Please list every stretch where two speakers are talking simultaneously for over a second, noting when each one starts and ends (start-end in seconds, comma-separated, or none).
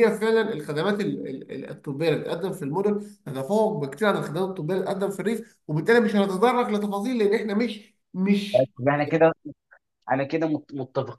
none